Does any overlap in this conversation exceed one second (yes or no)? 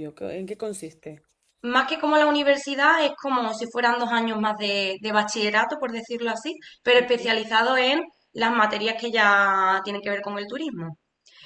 no